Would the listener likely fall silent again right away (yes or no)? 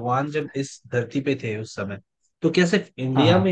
yes